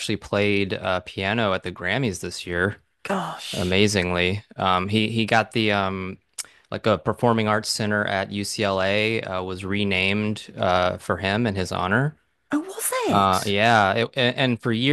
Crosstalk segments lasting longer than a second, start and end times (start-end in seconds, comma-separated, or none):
none